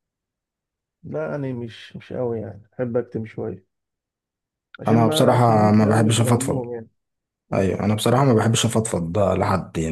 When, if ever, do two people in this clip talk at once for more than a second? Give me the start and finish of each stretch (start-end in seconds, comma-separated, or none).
4.9-6.6